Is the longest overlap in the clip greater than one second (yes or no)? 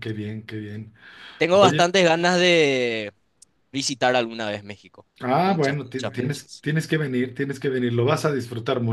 yes